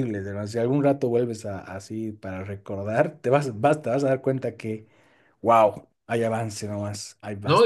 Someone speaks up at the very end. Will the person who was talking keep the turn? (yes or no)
no